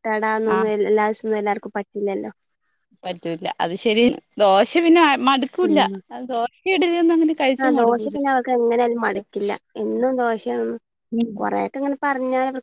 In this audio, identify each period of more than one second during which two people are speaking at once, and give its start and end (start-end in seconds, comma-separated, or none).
none